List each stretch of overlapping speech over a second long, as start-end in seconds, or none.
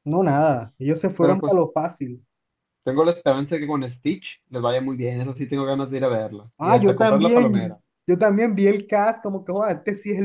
6.6-7.8